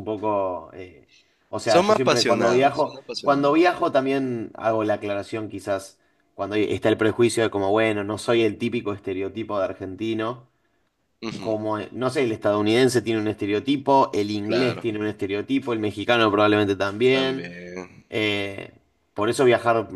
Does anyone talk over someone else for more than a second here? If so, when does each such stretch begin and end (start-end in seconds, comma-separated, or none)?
1.6-3.7